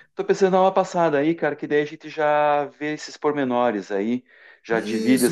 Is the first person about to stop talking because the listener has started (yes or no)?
yes